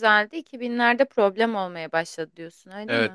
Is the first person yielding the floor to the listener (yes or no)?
yes